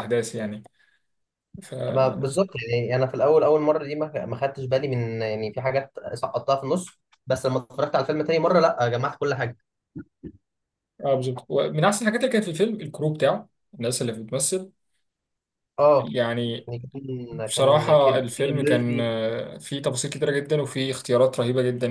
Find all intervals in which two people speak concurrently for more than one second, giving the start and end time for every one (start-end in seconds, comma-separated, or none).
17.5-19.1